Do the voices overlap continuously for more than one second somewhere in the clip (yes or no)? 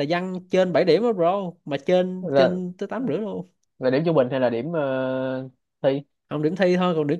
no